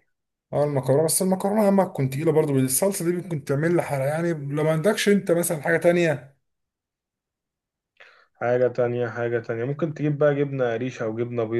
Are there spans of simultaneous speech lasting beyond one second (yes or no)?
no